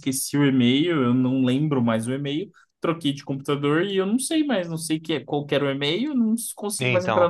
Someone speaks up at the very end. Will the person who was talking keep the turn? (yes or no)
yes